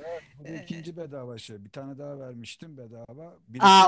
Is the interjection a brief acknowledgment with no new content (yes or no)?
no